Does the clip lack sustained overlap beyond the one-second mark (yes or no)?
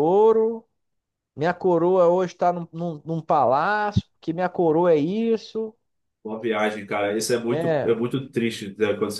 yes